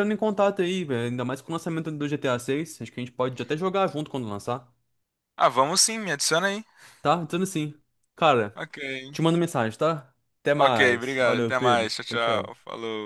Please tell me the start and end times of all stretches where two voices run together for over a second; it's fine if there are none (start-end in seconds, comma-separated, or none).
10.6-12.5